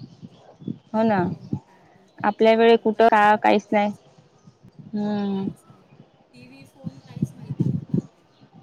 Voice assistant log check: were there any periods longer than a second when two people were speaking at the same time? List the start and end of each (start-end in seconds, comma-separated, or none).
2.3-3.9